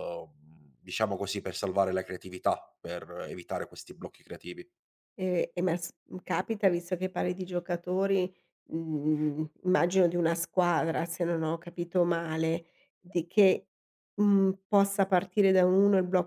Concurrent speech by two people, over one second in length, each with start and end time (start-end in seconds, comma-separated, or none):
none